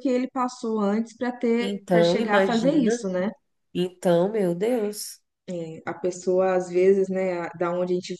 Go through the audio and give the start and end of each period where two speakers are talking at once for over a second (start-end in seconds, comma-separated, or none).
1.6-2.9